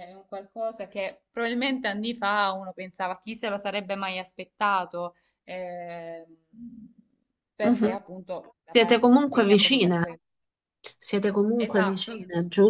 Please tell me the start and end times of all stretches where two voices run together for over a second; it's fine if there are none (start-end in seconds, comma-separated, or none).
8.7-10.0